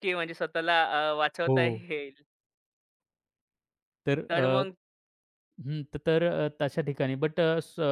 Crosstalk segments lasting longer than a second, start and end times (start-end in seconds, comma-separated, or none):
none